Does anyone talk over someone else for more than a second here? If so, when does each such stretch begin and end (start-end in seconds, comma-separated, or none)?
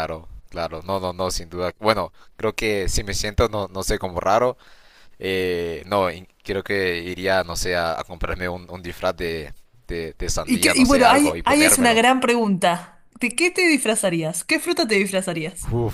10.4-12.0